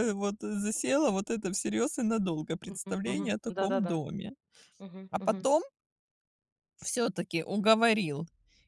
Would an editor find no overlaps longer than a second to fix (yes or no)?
no